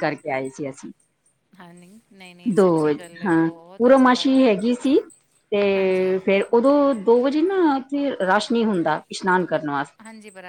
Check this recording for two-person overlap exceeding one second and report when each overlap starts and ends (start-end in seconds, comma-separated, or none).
2.5-4.6